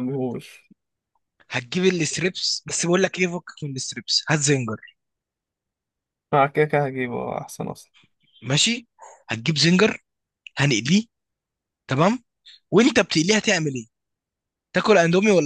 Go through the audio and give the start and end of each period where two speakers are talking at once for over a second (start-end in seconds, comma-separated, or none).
none